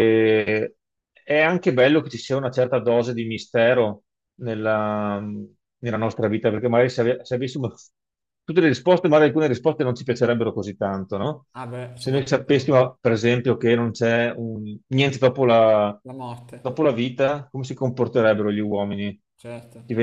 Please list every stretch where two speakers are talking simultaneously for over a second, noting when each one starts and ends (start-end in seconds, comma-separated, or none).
none